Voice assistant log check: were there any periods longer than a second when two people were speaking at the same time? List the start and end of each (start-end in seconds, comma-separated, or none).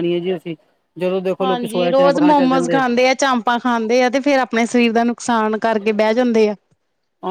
1.4-2.8